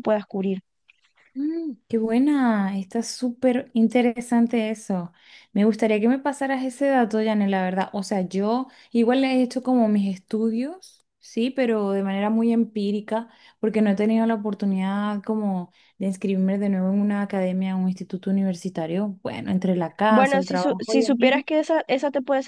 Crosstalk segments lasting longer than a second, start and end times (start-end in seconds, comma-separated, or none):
20.1-21.4